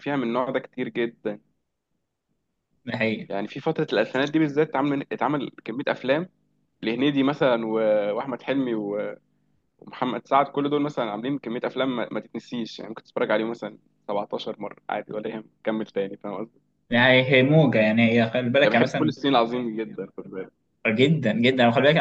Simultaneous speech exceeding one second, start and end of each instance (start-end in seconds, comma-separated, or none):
none